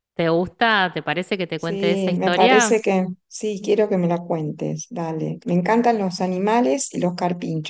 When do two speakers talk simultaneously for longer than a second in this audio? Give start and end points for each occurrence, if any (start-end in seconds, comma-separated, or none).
1.6-2.9